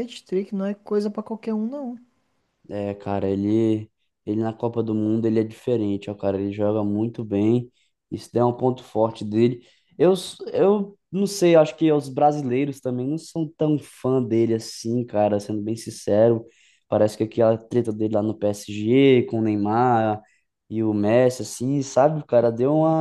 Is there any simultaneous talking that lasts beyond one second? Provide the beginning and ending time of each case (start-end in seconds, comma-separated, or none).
none